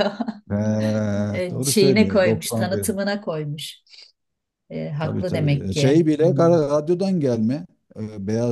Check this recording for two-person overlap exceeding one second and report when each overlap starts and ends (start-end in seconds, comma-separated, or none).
1.5-2.9, 5.0-6.5